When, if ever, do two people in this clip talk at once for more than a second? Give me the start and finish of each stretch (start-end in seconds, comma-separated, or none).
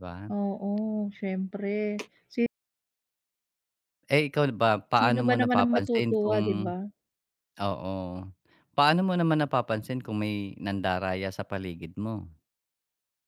5.0-6.7